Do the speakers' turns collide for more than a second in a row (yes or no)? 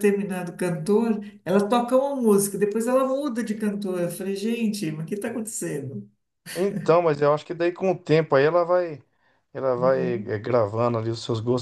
no